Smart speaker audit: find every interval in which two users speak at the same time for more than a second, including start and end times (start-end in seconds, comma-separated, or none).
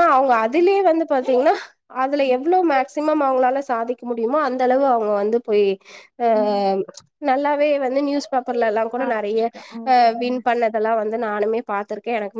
none